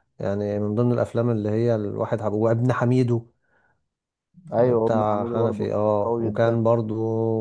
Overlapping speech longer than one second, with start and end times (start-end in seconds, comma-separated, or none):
4.6-6.6